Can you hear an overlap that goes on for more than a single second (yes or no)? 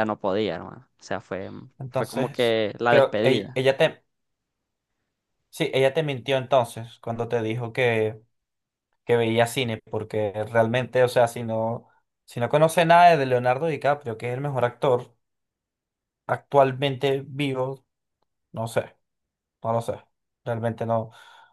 yes